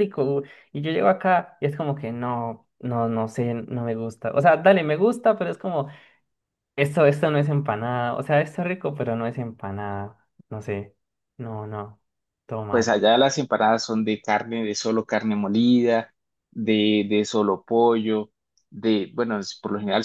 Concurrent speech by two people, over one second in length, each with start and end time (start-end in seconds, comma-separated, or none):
none